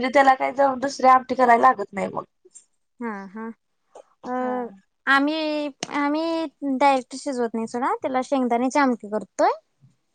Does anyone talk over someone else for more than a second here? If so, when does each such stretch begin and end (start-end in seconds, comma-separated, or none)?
none